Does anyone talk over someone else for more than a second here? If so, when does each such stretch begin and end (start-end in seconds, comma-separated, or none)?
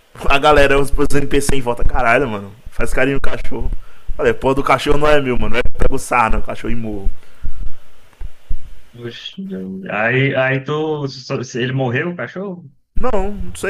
none